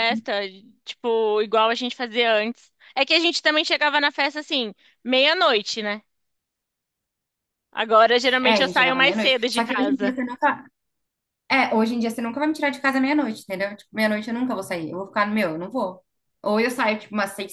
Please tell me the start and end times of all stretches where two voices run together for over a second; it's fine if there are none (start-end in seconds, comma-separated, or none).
8.4-10.2